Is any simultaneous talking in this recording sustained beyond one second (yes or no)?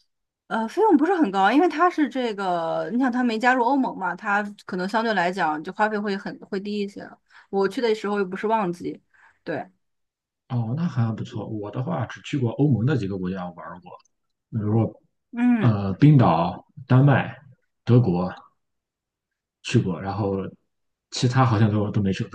no